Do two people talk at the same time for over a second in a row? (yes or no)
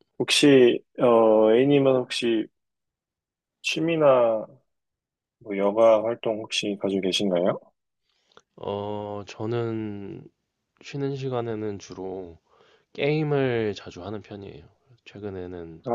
no